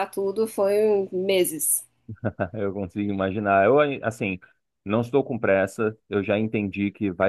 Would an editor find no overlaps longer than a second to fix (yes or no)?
yes